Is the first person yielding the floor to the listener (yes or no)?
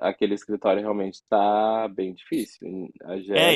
yes